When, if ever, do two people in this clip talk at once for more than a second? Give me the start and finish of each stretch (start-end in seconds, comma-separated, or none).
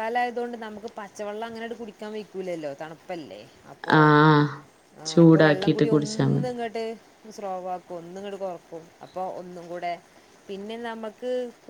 5.1-6.5